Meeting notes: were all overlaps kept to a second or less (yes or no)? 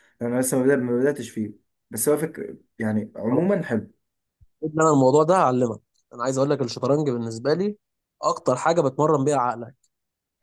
yes